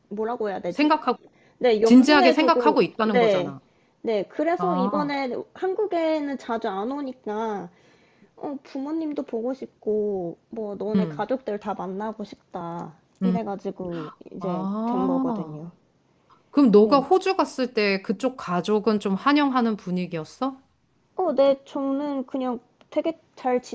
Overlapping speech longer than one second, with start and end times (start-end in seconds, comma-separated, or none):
1.8-3.5, 14.4-15.6